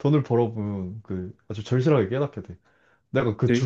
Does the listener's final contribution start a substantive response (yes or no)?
no